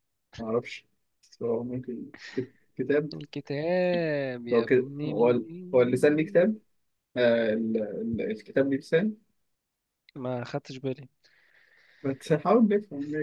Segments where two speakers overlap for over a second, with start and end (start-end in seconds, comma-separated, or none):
4.5-6.4